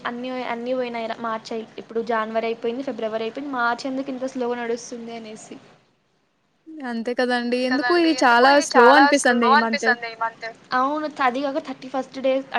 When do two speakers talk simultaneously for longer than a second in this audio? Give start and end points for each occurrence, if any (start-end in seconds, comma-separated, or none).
7.4-9.9